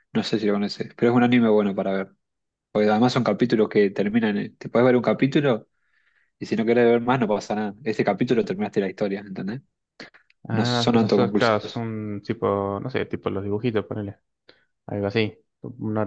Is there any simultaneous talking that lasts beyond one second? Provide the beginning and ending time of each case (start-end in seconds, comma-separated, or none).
10.5-11.8